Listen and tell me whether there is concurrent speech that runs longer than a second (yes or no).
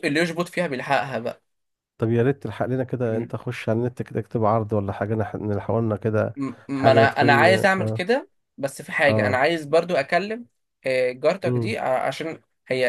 yes